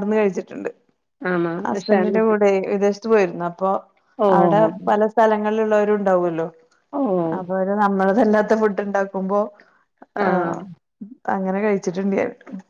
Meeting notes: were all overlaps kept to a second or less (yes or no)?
yes